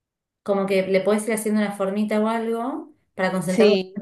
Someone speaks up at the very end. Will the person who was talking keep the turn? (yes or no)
yes